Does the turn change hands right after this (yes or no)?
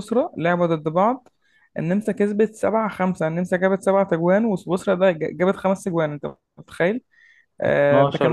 no